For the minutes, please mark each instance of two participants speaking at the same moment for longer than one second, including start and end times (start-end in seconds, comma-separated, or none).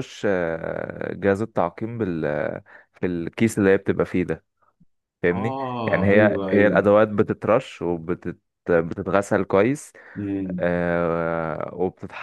5.3-6.9